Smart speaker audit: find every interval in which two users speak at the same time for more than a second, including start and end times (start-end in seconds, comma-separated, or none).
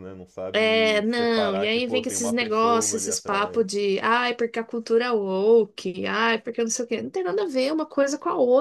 0.5-3.6